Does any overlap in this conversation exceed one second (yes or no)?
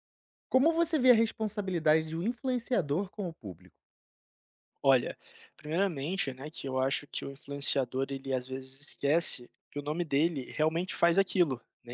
no